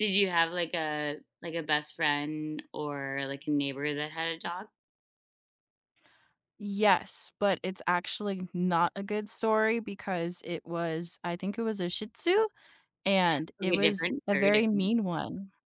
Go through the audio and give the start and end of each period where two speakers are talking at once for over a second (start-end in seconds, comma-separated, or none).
13.6-14.9